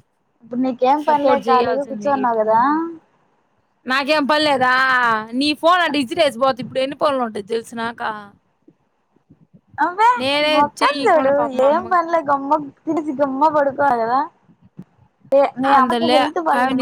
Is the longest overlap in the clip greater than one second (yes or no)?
yes